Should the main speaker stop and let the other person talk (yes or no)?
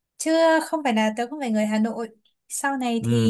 no